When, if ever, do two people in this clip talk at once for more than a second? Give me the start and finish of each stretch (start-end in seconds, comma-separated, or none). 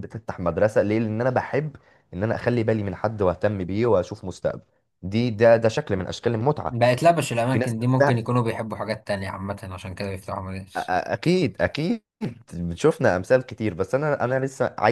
none